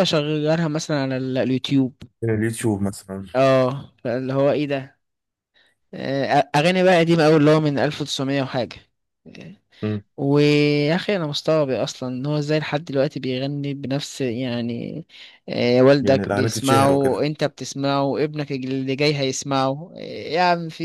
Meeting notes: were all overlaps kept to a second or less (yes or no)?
no